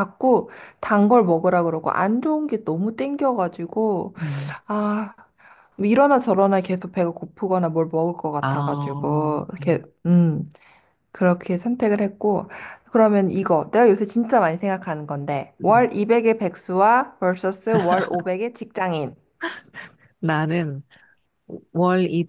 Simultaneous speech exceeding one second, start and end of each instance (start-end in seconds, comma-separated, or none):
8.4-9.8